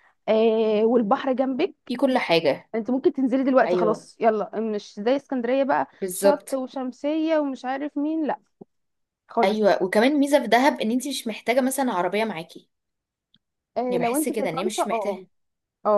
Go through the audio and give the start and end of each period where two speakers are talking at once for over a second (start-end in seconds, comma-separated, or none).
13.9-15.2